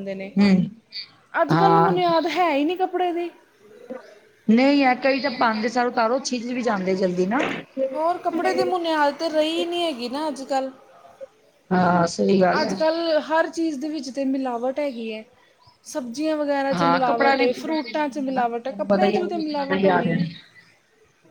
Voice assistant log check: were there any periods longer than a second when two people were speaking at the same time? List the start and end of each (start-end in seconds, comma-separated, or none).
16.7-18.4